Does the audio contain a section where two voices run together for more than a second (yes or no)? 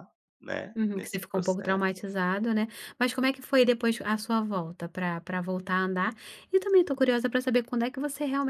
yes